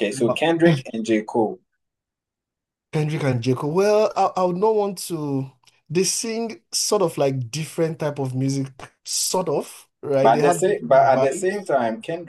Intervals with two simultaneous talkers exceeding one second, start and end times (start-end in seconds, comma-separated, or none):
10.2-11.7